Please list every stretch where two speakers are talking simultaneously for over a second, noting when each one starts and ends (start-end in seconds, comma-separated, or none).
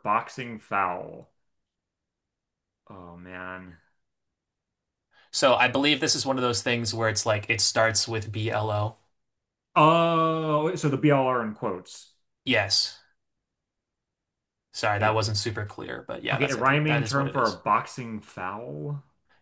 16.3-17.6